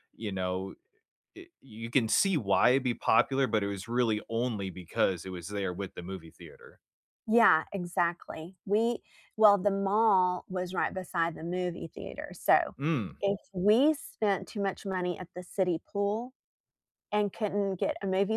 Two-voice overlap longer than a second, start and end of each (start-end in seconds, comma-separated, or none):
none